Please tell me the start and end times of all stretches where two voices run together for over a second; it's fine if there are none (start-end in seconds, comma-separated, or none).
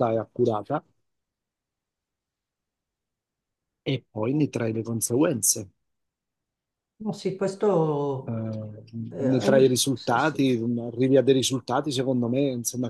9.2-10.6